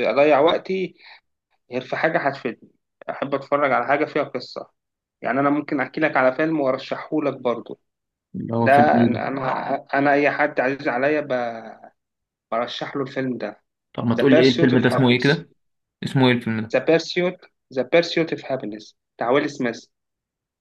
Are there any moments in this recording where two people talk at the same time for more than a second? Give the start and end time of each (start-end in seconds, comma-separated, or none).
14.2-15.4